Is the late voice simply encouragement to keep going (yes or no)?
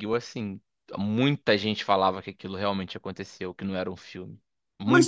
no